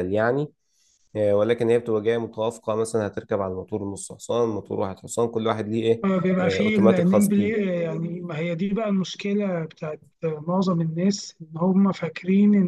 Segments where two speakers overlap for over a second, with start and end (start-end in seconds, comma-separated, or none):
6.0-7.7